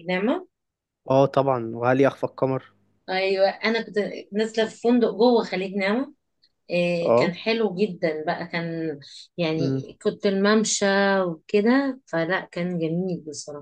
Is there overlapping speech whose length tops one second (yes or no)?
no